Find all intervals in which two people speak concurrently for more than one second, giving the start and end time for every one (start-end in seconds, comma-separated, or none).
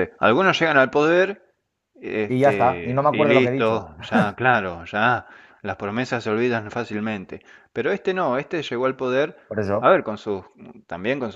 2.3-3.8